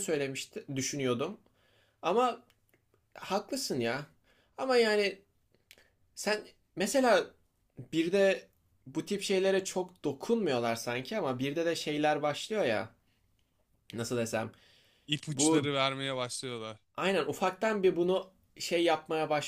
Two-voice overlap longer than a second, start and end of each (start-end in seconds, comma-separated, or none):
none